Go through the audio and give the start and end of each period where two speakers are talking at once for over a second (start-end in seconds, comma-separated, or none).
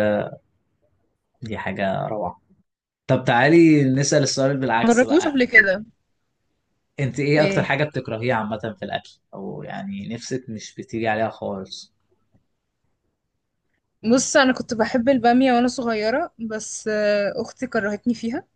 none